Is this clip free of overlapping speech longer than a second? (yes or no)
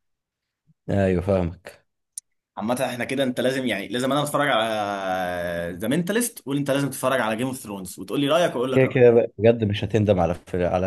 yes